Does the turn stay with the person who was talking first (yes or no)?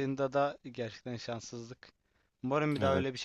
yes